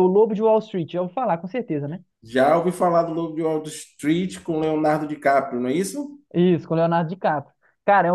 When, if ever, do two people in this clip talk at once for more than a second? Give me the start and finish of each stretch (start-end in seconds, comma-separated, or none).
none